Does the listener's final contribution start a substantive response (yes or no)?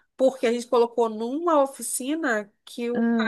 no